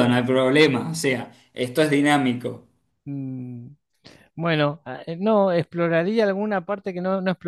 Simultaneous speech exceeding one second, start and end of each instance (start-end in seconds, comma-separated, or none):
none